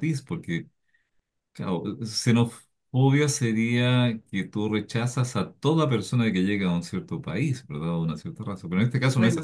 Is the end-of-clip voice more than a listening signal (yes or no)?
no